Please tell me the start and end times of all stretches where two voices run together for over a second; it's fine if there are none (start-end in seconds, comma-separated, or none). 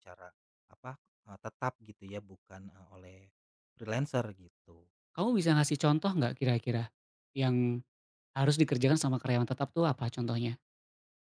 none